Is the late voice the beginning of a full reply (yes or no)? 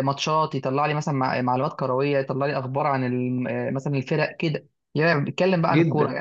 yes